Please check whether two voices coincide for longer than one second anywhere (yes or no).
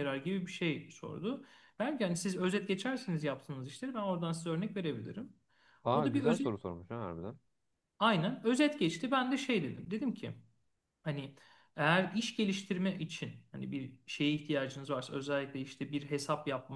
no